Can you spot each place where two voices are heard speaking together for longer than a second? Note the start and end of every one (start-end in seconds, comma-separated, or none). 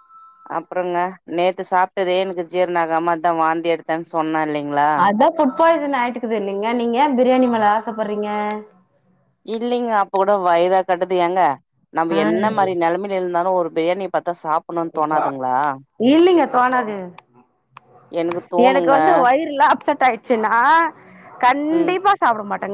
none